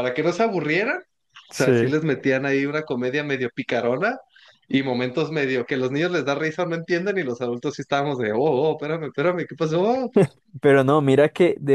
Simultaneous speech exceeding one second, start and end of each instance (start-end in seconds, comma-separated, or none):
none